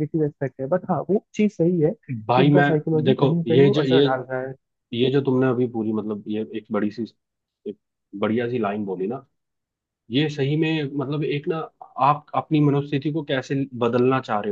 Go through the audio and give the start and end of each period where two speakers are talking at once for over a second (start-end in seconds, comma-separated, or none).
2.3-4.0